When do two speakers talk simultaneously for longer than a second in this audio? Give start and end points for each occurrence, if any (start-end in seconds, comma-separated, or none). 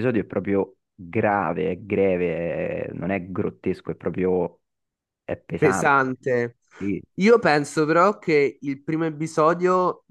none